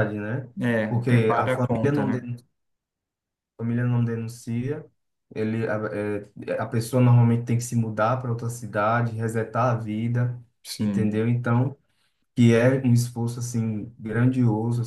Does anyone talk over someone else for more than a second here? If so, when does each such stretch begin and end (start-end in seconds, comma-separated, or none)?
0.9-2.2